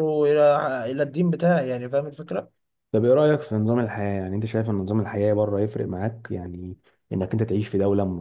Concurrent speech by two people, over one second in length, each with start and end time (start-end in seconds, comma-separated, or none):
none